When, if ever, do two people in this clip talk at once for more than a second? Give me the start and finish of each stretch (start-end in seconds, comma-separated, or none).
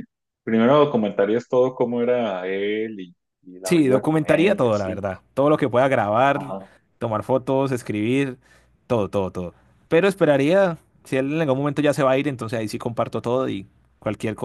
3.6-5.0